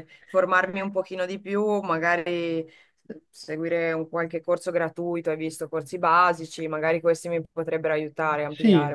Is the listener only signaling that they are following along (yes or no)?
no